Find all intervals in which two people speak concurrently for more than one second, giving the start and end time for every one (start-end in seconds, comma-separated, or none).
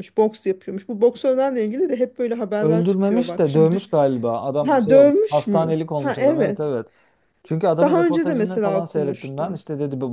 2.6-3.9, 4.7-6.7, 7.8-9.6